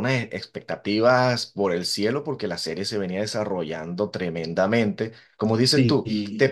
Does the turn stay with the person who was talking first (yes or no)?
yes